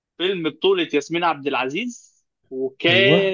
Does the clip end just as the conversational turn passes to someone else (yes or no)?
no